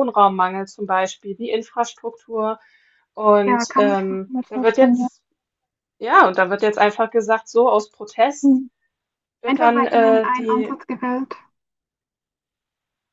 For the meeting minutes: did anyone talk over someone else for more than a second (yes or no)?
yes